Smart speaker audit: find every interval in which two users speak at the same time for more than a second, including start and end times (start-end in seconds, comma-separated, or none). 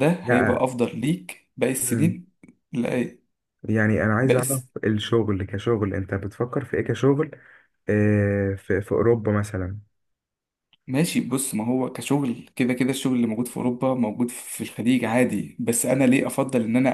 none